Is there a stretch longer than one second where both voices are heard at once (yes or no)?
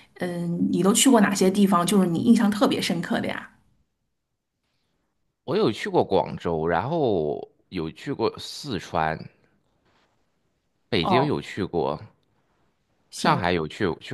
no